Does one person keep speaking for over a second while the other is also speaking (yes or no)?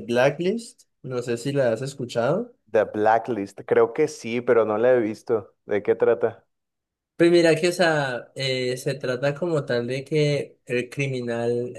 no